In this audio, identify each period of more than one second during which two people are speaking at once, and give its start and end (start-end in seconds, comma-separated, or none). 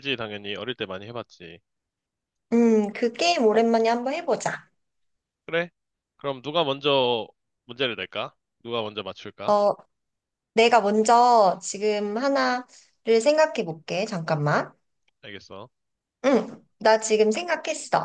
none